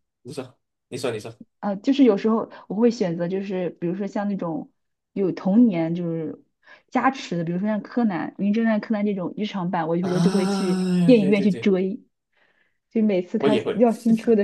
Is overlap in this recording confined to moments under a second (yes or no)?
no